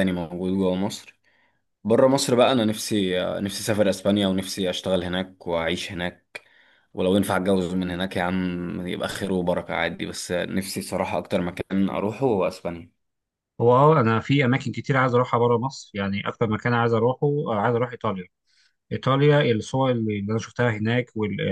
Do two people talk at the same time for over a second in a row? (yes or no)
no